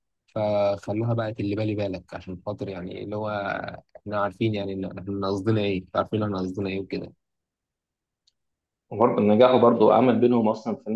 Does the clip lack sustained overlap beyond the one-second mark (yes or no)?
yes